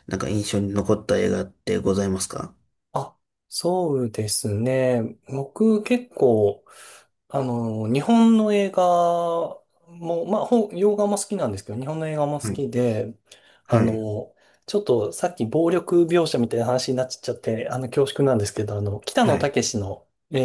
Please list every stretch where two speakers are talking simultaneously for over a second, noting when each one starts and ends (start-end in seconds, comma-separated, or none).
none